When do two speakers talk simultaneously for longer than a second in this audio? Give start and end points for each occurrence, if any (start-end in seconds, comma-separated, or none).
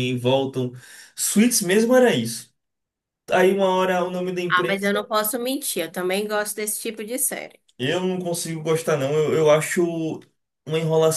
none